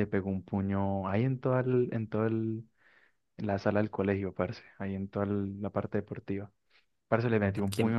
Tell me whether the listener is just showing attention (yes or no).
yes